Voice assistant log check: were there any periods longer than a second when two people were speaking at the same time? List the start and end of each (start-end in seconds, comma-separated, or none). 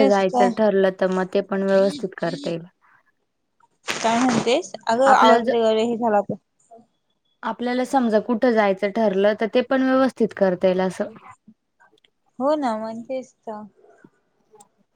none